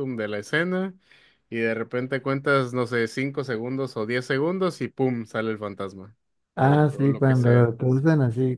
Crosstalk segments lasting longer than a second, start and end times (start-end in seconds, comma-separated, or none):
6.5-7.8